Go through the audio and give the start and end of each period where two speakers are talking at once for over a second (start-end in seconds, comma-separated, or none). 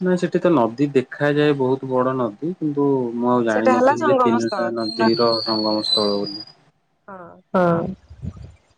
3.5-6.2